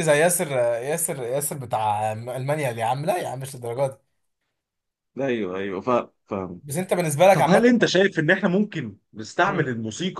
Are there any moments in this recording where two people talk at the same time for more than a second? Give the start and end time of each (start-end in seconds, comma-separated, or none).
none